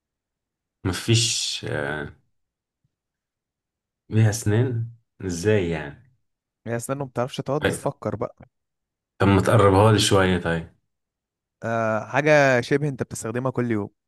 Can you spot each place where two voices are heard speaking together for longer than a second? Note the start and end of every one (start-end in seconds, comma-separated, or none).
none